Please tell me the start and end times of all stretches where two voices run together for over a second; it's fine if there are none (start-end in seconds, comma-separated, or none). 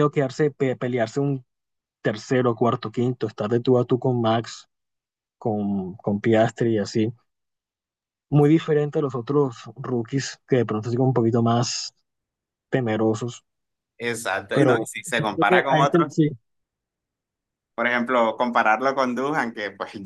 14.5-16.2